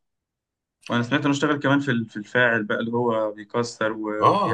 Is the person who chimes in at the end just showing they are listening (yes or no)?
no